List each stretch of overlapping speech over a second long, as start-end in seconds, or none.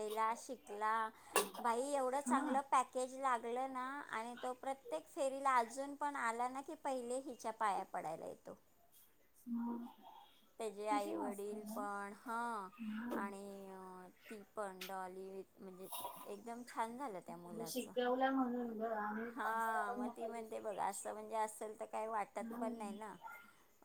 19.4-21.0